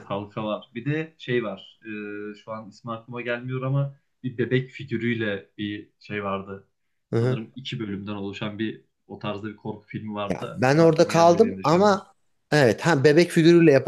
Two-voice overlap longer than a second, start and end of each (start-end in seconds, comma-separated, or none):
10.3-12.0